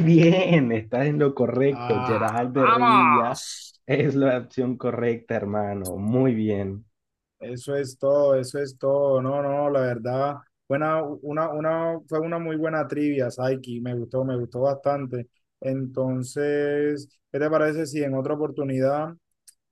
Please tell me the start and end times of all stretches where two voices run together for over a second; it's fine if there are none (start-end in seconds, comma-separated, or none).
1.7-3.4